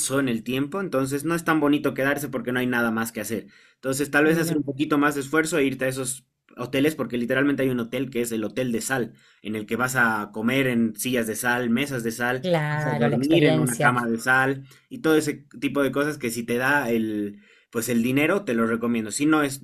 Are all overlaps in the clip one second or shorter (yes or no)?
no